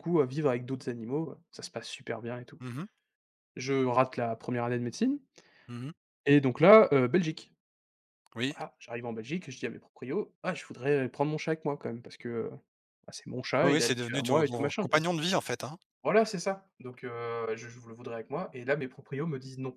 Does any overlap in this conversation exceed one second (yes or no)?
yes